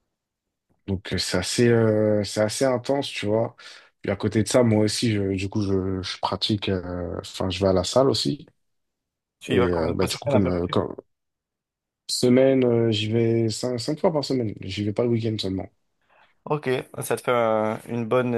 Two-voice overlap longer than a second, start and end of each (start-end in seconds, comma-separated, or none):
9.5-10.8